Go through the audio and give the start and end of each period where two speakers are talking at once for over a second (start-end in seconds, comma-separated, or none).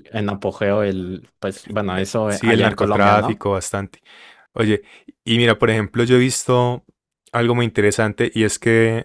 2.2-3.5